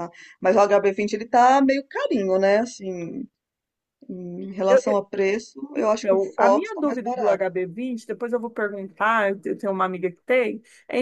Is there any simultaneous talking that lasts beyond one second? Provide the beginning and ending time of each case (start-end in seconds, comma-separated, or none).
5.8-7.4